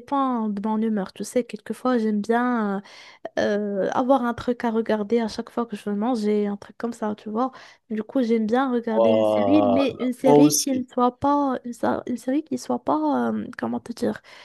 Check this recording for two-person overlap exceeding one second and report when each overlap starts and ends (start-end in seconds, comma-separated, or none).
8.9-10.8